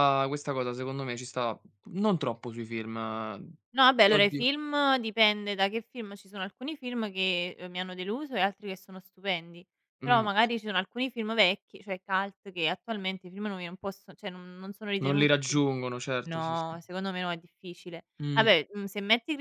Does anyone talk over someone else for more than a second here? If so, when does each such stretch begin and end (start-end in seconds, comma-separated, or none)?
none